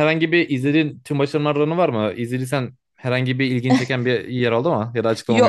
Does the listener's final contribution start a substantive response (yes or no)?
yes